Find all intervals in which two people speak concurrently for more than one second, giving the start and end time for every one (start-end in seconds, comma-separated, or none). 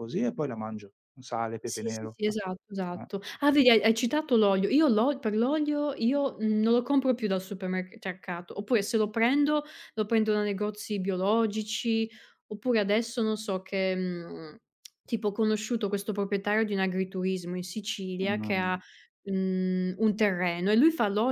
1.6-3.1